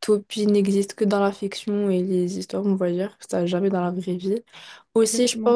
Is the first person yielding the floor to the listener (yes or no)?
no